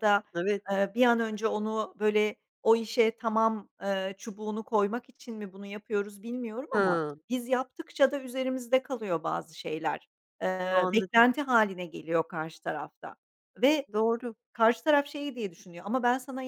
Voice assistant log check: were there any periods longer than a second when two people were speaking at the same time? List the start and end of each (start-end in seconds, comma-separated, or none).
none